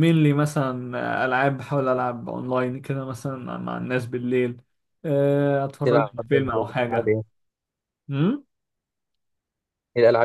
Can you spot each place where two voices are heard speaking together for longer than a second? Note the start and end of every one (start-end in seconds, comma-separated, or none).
5.8-7.1